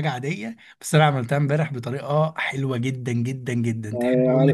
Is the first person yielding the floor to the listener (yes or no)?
yes